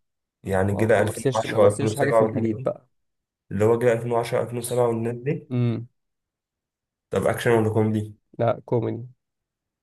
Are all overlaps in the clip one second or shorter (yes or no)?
no